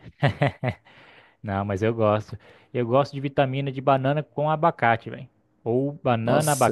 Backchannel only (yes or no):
yes